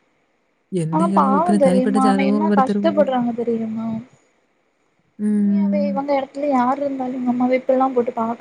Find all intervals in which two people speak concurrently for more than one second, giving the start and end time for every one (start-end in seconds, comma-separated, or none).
0.9-3.1